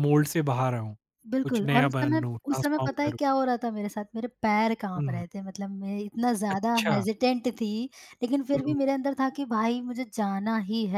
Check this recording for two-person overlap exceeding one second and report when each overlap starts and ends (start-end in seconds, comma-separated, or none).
1.4-3.2